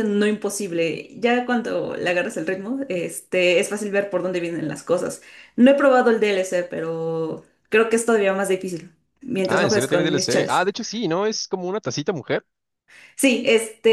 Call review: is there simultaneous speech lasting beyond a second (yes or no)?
yes